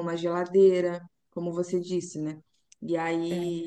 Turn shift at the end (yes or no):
no